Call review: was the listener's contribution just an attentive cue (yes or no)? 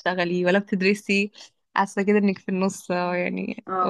no